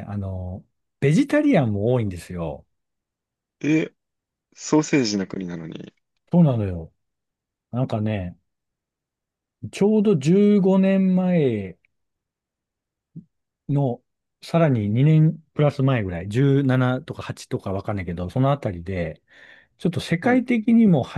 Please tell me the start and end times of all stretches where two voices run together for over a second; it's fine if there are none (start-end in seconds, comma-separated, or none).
none